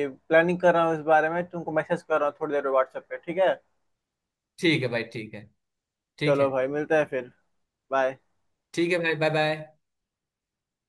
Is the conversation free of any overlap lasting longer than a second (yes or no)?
yes